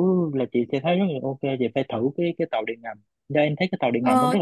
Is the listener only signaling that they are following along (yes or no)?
no